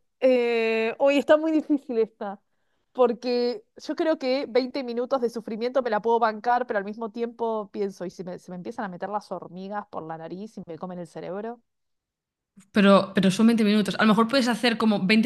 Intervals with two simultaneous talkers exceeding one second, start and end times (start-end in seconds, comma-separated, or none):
none